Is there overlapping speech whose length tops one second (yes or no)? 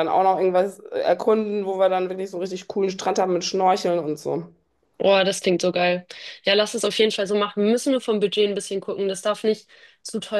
no